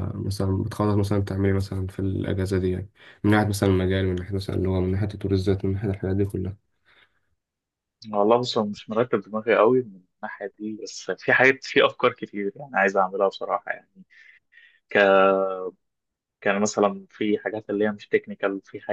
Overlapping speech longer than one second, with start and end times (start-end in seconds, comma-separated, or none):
none